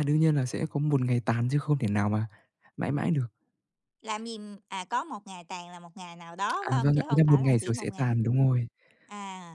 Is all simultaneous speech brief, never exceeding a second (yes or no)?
no